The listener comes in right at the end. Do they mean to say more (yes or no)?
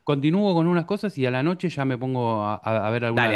yes